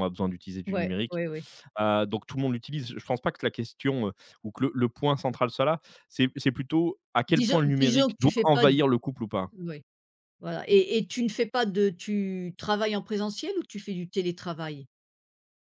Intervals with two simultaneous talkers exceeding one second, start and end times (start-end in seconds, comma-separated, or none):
7.3-8.7